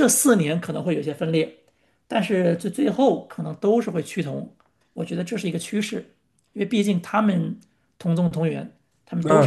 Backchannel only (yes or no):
no